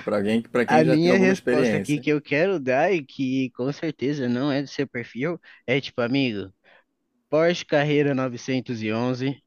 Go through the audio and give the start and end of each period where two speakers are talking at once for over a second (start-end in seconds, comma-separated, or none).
0.7-2.1